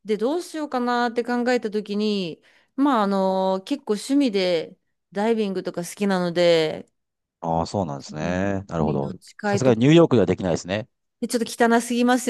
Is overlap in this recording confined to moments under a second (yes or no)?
no